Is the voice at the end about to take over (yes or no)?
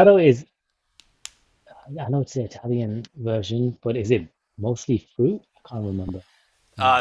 yes